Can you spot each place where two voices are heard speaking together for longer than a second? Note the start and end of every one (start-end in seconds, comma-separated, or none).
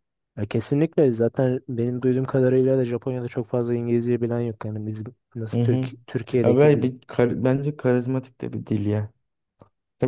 none